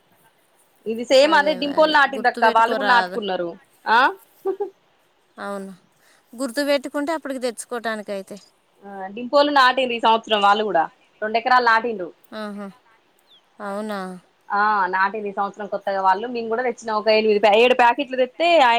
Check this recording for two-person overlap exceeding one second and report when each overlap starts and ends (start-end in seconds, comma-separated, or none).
1.7-3.2